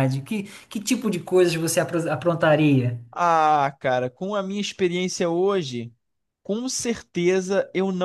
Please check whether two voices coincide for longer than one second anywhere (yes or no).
no